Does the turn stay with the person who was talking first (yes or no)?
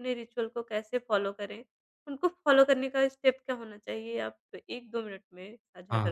no